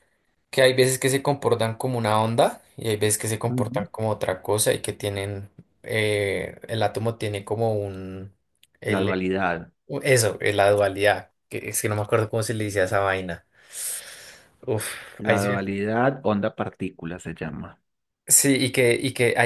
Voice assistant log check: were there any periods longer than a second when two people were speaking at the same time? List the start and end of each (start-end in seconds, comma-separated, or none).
none